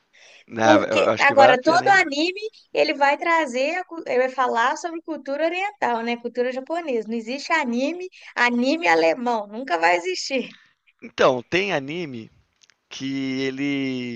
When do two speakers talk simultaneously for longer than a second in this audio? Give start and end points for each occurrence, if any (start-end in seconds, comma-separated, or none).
0.6-2.0